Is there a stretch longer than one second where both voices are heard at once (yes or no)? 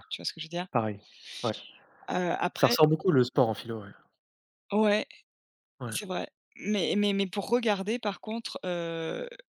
no